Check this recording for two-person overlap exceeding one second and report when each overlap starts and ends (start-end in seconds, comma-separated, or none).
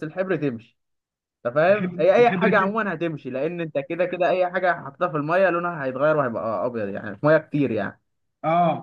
1.7-2.9